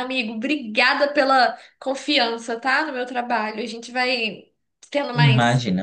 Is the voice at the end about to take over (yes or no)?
no